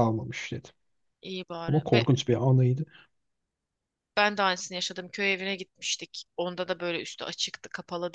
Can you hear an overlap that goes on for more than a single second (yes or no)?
no